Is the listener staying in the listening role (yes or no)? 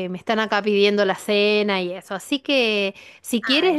yes